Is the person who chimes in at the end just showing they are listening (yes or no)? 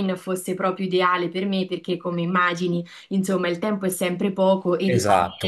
no